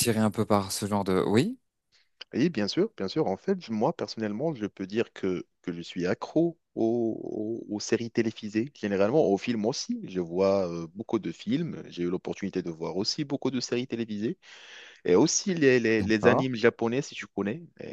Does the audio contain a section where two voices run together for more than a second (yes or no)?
no